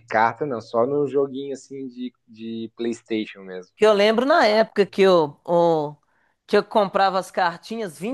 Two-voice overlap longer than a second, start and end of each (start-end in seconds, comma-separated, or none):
none